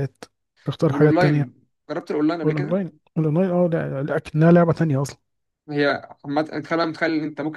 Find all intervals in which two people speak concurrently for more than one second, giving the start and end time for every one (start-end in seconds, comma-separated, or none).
none